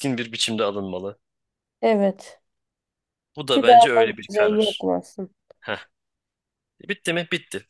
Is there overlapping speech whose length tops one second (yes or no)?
yes